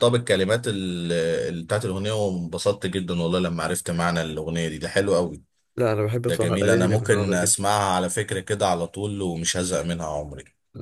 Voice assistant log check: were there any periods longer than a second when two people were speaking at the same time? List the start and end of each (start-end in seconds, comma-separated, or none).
6.3-7.6